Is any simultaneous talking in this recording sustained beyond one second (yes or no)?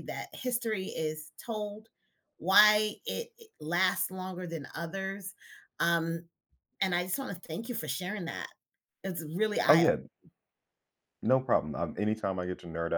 no